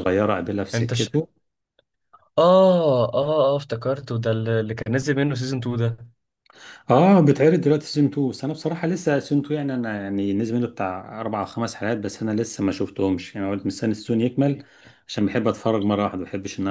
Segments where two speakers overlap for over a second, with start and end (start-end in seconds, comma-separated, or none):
none